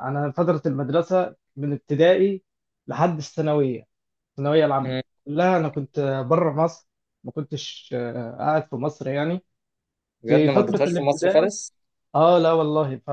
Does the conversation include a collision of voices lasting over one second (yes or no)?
yes